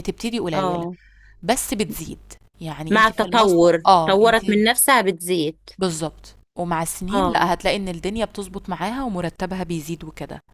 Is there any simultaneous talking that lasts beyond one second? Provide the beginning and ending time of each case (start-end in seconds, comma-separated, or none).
2.9-4.4